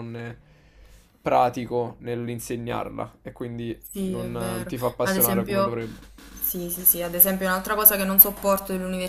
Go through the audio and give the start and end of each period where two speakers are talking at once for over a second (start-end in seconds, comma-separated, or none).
3.9-5.8